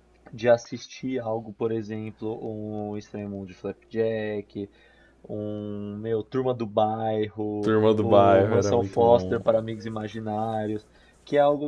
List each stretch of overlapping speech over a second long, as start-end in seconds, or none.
7.6-9.4